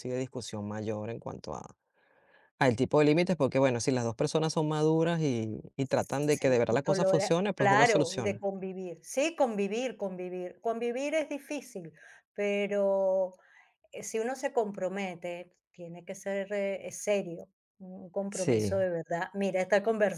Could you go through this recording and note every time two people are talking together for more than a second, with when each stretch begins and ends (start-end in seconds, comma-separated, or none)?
5.9-8.4